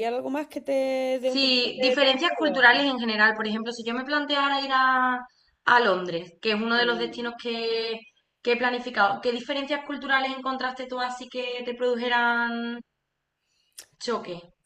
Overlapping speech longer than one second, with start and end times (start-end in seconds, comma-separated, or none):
1.3-2.8